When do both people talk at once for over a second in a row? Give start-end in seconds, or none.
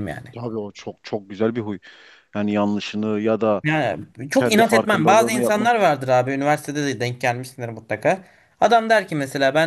4.3-5.7